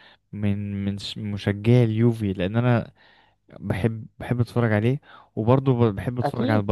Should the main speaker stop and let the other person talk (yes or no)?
no